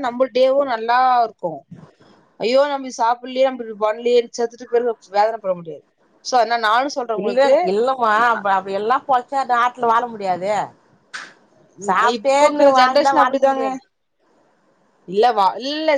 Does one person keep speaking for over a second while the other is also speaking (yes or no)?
yes